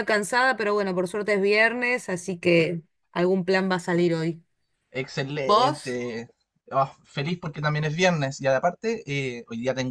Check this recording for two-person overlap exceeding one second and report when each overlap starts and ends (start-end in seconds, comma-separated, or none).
none